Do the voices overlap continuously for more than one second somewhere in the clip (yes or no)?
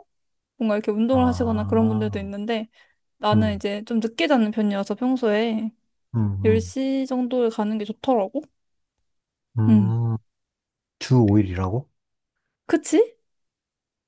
yes